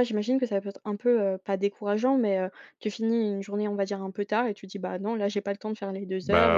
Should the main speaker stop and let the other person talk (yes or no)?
no